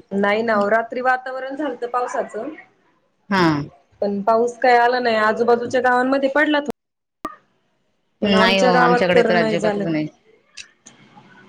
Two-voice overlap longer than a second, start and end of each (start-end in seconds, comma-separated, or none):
8.2-9.8